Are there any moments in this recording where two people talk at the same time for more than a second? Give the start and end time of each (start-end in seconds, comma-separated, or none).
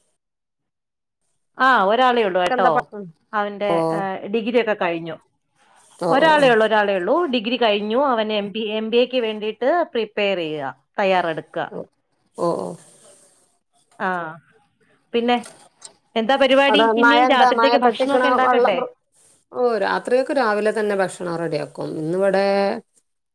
16.7-18.7